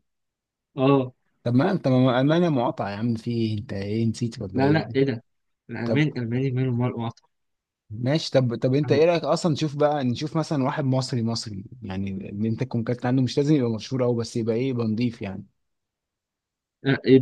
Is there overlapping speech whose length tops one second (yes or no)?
no